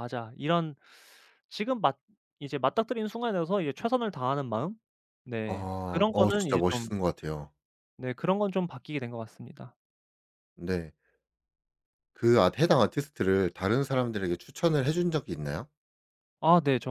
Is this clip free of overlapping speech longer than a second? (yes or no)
no